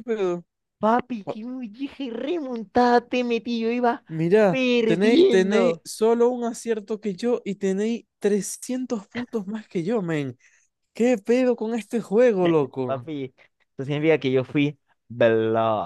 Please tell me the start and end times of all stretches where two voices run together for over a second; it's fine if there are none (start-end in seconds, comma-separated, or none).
4.5-5.8